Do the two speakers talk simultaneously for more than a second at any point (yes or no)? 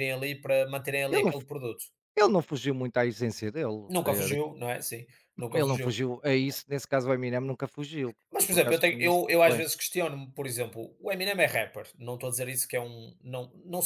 yes